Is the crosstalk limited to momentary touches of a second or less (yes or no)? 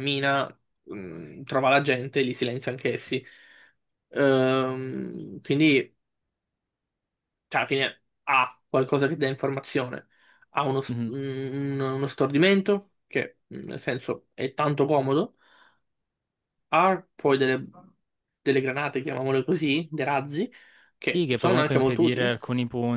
no